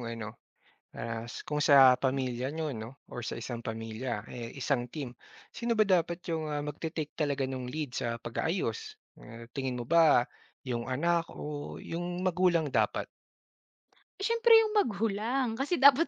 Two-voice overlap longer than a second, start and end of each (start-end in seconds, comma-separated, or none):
none